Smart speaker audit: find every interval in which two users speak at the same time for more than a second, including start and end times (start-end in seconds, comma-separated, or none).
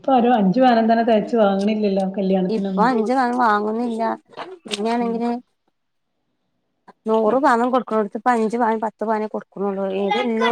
none